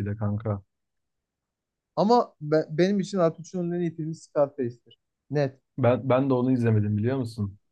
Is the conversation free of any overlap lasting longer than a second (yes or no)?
yes